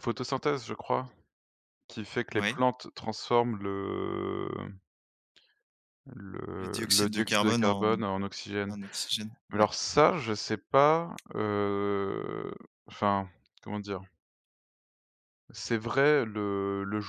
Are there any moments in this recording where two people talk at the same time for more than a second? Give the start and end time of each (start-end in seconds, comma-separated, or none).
6.5-7.9